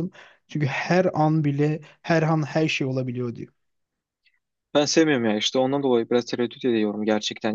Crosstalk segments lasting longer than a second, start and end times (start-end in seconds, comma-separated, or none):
none